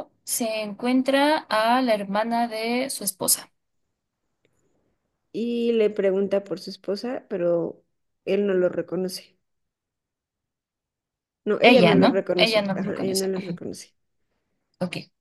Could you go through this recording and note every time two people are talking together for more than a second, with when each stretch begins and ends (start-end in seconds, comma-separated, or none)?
11.6-13.6